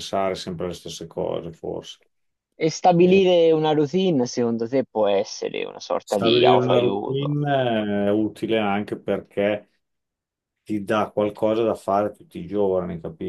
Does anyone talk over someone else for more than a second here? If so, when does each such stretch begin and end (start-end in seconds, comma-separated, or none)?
6.0-7.4